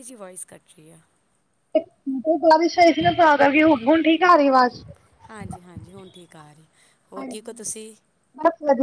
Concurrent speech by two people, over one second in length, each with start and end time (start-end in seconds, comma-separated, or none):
none